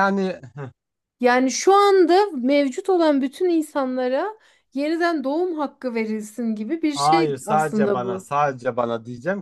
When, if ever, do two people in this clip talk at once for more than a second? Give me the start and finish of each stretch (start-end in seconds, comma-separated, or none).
6.9-8.3